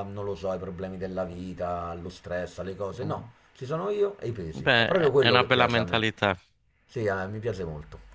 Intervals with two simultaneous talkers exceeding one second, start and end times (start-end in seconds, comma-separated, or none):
4.6-6.0